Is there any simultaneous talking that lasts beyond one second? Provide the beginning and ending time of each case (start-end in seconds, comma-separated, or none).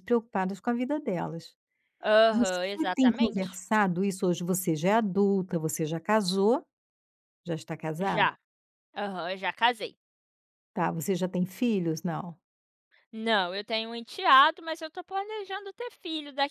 2.3-3.6